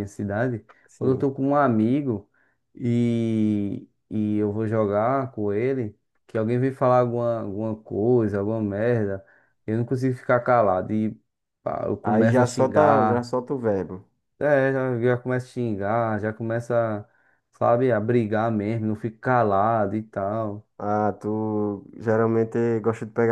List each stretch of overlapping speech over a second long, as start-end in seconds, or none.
12.0-13.3